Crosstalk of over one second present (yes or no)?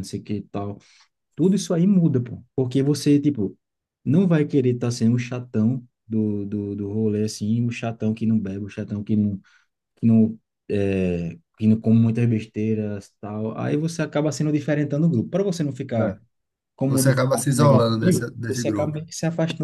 yes